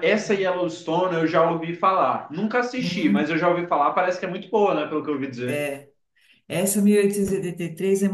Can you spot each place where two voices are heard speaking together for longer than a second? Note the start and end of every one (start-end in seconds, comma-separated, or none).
none